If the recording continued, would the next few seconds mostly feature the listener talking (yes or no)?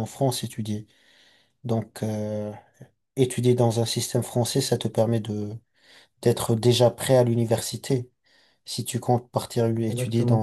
no